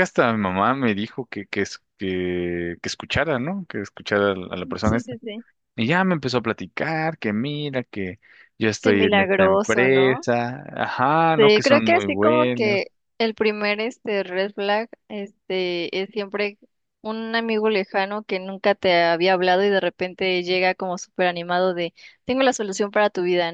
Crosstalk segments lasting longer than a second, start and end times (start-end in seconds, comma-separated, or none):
8.8-10.3, 11.4-12.8